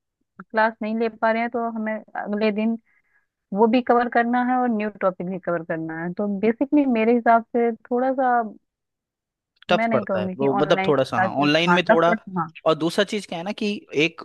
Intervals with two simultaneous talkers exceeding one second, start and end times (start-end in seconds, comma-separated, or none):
9.7-12.2